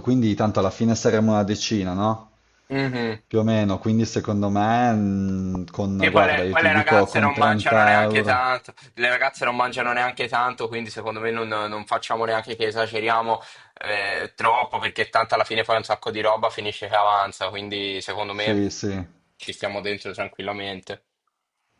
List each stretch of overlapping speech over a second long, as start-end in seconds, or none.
6.0-8.5